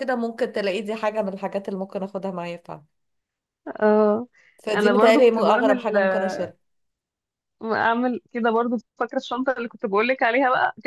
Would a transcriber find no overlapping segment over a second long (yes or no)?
no